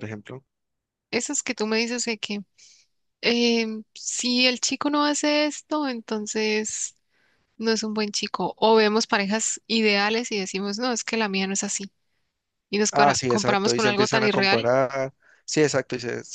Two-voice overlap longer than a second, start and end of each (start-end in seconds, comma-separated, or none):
12.9-14.7